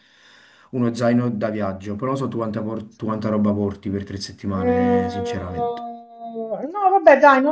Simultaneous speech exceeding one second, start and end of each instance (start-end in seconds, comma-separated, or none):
4.5-5.8